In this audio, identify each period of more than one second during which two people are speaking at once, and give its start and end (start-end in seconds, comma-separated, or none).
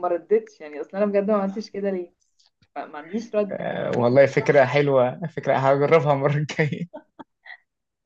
none